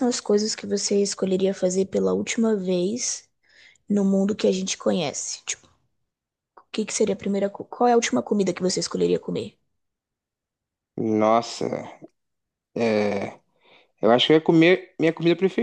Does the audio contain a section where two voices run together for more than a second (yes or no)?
no